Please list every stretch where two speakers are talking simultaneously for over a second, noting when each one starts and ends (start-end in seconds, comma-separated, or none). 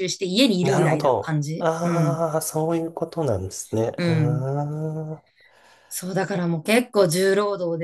0.6-2.2